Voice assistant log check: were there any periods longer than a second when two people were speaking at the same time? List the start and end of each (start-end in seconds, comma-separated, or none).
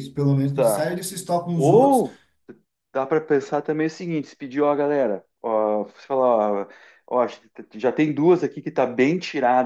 none